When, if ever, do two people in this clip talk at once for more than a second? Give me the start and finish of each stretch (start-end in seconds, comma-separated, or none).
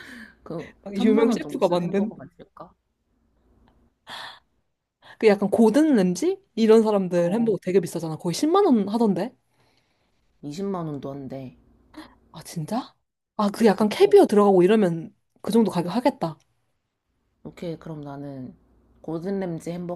0.9-2.1